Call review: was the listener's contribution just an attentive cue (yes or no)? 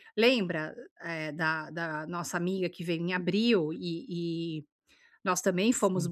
yes